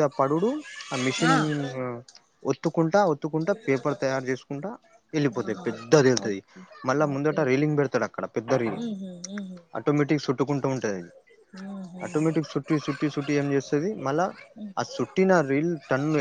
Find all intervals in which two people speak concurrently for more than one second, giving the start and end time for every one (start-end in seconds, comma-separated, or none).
none